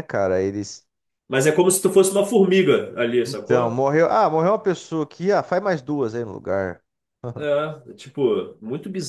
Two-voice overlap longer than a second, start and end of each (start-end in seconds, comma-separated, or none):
none